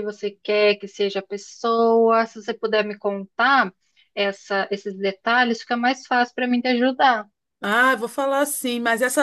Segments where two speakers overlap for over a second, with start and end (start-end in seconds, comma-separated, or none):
none